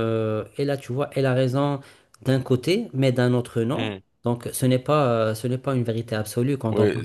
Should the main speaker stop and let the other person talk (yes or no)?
yes